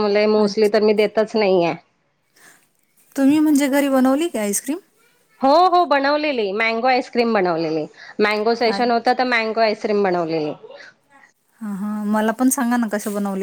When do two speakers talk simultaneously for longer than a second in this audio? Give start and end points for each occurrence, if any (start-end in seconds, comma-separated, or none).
none